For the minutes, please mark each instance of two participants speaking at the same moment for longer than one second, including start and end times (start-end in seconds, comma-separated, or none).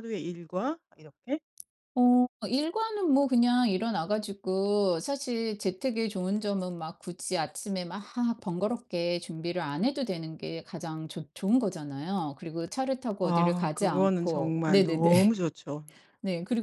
13.2-15.1